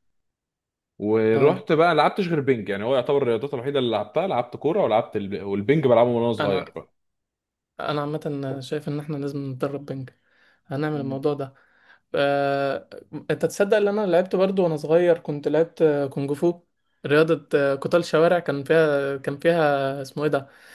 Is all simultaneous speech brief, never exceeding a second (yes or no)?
yes